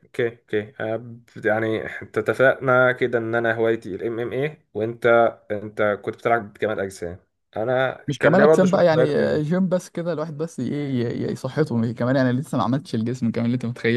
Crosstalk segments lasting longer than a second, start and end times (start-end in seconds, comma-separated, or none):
8.1-9.6